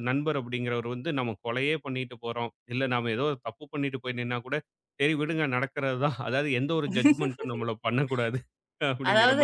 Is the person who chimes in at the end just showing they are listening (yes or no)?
no